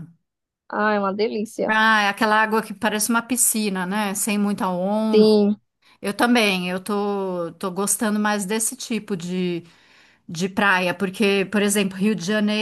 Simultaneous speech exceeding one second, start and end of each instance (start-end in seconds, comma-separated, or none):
none